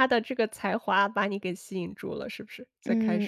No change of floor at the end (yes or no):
no